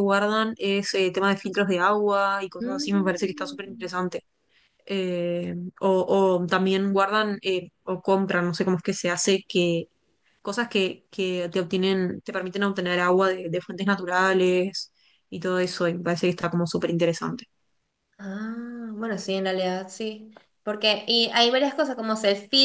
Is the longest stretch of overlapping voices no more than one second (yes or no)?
no